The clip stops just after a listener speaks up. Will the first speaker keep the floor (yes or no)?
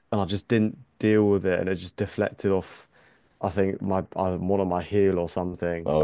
yes